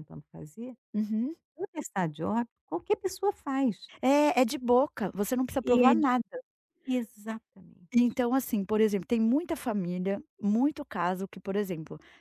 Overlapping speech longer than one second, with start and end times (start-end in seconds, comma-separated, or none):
none